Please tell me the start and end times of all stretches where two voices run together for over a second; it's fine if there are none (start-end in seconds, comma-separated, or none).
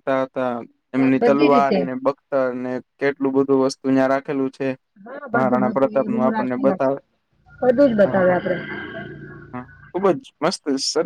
5.3-6.9